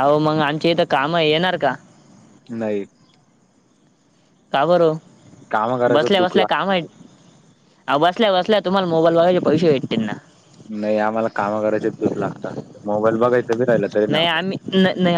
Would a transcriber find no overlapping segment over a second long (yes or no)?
no